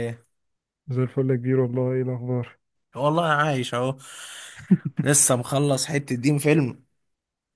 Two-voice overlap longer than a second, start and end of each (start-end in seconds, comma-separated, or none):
none